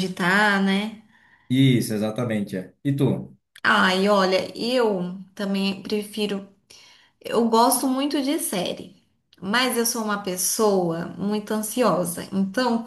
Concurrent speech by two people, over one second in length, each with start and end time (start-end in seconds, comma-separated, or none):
none